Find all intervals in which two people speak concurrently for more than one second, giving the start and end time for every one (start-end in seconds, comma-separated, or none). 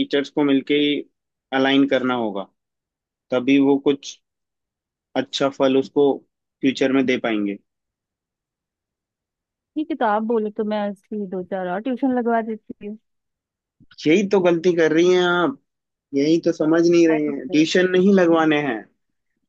none